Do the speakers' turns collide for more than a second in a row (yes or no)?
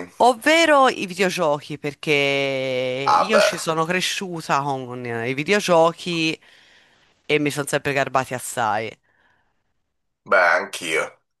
no